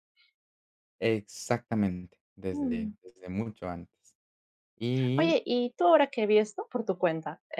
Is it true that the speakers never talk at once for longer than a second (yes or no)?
yes